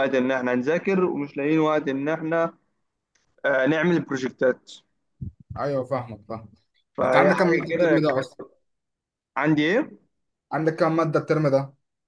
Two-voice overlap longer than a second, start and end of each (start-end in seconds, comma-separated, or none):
7.0-8.2